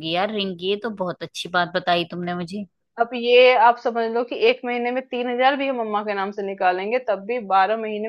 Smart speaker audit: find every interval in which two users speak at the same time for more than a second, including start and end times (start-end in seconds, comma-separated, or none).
none